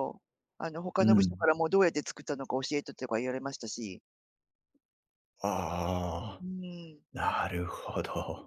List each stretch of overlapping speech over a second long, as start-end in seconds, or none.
none